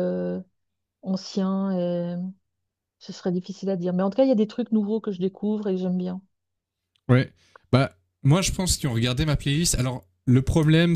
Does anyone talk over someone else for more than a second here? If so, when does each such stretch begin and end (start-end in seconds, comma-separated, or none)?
none